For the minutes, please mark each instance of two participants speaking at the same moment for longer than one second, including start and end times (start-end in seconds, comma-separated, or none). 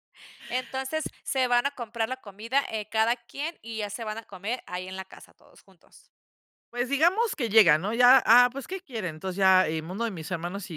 none